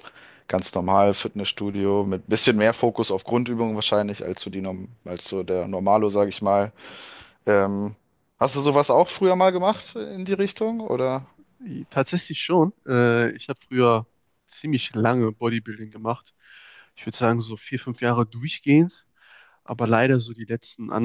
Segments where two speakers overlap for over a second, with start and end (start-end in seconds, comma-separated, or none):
none